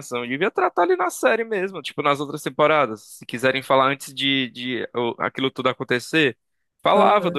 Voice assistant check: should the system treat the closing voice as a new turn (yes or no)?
no